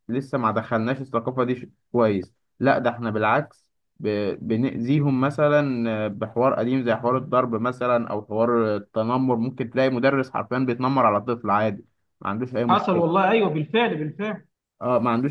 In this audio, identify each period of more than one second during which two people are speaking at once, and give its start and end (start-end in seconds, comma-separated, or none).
none